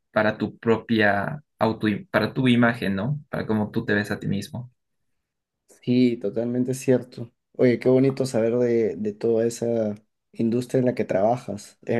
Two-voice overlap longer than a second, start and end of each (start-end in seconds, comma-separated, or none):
none